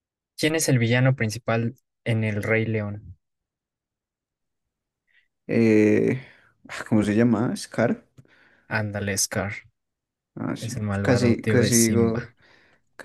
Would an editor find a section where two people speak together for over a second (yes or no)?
yes